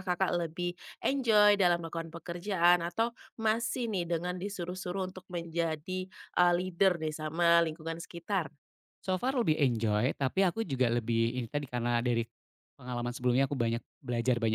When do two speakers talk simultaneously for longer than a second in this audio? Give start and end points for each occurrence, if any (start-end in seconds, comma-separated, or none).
none